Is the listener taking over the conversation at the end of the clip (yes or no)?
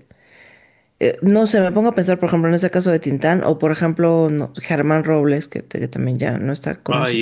yes